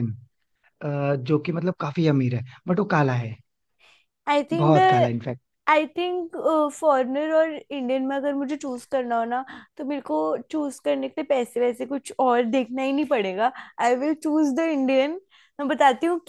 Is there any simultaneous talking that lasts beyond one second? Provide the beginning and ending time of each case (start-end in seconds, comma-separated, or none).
none